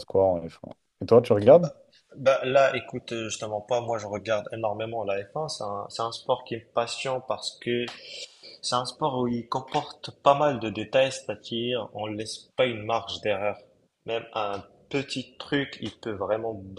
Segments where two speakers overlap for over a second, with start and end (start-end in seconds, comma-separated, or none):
none